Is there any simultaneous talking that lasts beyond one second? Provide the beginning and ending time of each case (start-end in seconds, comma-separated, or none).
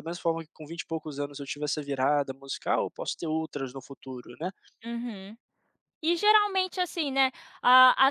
none